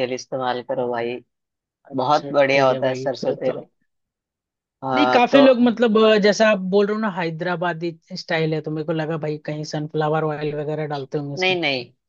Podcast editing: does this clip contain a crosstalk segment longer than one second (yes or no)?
yes